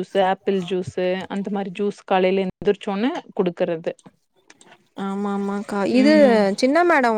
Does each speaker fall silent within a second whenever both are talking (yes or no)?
yes